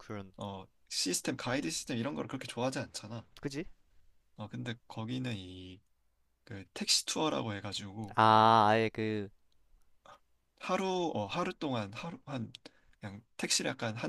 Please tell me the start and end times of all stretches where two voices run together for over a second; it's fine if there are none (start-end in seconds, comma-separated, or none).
none